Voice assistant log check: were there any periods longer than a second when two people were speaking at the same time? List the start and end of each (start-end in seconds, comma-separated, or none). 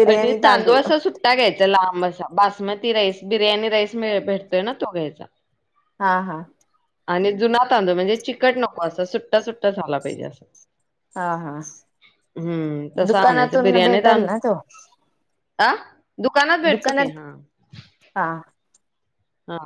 13.1-14.4